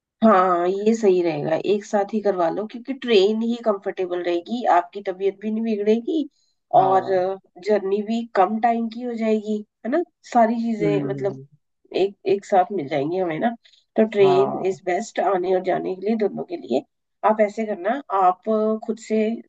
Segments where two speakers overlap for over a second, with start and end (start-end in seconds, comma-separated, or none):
none